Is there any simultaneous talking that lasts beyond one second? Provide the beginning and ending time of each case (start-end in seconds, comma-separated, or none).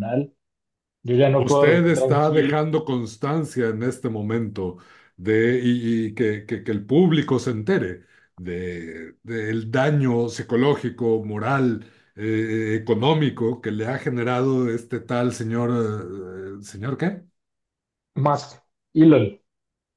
1.4-2.6